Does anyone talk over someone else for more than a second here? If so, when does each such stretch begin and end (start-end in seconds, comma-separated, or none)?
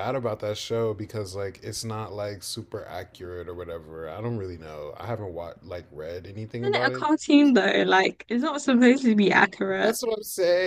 none